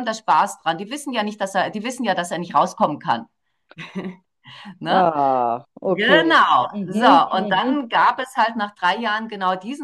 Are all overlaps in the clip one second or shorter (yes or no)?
no